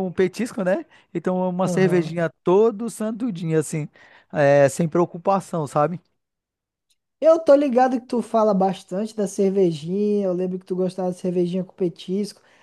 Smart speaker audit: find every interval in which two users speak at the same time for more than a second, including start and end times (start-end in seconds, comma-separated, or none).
none